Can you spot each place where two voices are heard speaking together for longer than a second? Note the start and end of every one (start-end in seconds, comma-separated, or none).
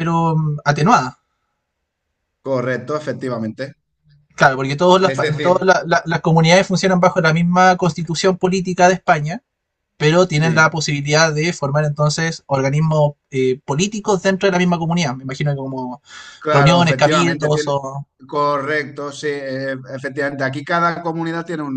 16.5-17.7